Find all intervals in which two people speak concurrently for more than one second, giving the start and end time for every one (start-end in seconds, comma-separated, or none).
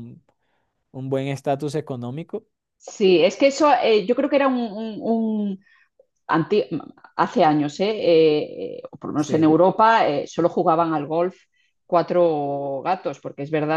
none